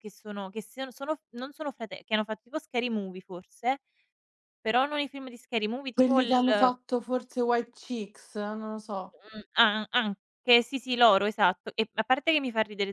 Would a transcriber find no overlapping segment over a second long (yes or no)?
yes